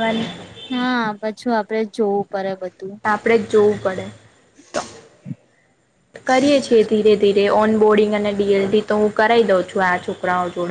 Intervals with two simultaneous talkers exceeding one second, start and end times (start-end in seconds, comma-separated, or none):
none